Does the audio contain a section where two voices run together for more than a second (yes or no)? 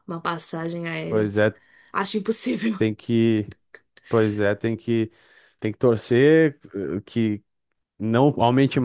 no